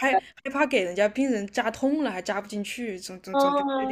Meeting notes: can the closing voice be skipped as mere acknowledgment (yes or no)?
no